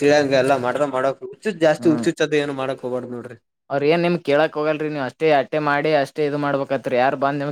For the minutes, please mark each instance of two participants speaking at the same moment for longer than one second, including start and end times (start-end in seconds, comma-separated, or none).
none